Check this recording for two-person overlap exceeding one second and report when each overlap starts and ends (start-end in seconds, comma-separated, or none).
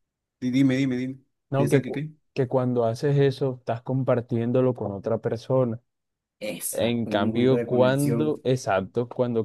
6.7-8.4